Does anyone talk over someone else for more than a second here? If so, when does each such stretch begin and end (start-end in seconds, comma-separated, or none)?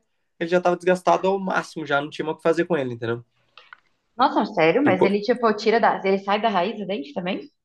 none